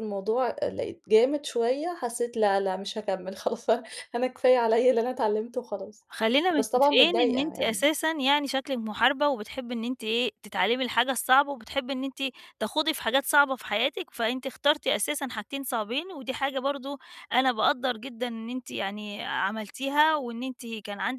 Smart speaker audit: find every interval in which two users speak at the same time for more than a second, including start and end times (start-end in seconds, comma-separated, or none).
6.5-7.8